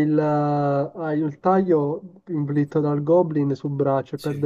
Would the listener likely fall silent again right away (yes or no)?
yes